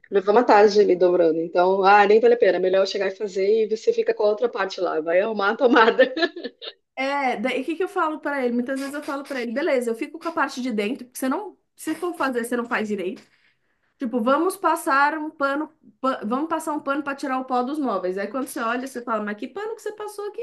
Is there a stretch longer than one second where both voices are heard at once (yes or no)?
no